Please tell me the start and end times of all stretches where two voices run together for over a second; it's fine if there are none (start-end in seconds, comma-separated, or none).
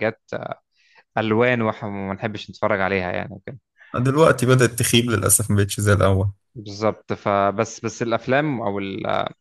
none